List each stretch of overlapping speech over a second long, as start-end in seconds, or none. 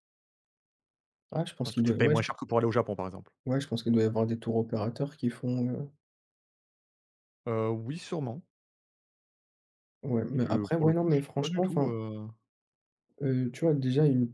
10.4-11.9